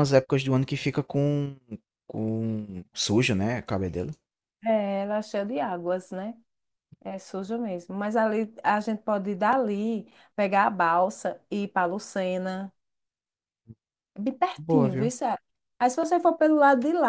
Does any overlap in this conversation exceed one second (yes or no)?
no